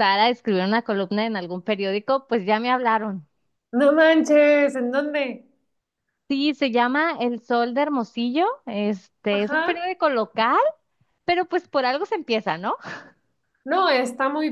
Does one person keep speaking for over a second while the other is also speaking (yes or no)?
no